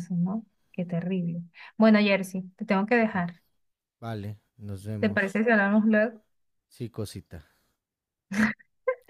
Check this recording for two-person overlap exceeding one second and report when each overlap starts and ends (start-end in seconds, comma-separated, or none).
none